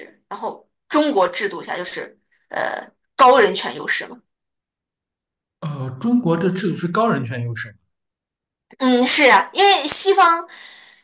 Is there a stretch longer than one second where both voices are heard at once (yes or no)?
no